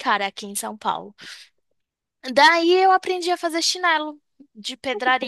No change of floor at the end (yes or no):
yes